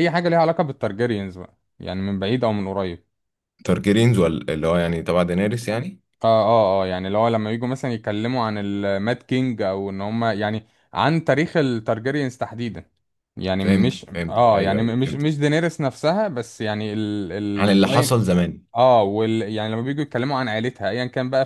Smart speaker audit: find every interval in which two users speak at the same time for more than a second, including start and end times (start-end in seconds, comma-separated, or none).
13.6-15.2